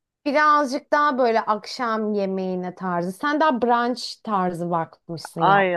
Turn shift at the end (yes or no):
yes